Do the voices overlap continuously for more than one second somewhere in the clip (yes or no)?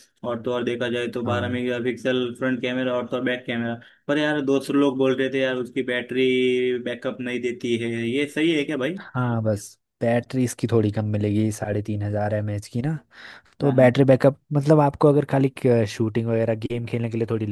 no